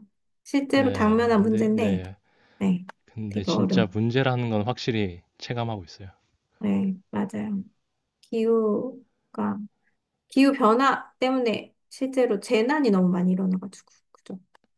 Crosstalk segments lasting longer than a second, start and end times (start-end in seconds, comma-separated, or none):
0.7-2.0